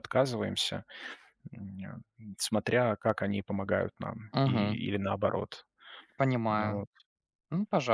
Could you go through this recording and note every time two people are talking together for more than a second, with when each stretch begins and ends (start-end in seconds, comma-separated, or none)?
none